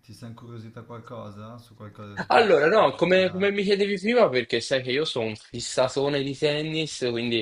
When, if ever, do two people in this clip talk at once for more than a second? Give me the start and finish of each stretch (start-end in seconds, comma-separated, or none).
2.3-3.5